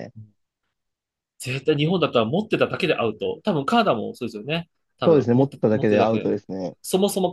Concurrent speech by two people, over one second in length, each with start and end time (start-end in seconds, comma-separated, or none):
5.0-6.3